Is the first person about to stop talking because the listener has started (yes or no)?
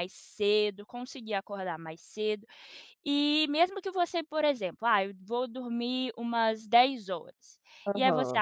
no